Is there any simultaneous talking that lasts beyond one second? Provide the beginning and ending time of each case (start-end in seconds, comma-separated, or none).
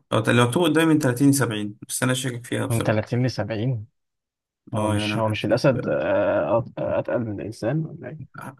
4.8-6.0